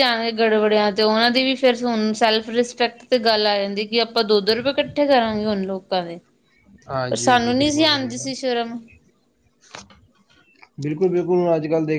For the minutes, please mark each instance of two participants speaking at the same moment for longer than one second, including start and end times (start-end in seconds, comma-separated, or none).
7.1-8.3